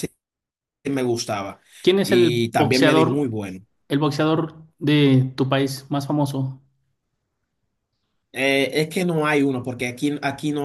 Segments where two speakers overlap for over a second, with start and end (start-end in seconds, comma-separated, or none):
2.0-3.4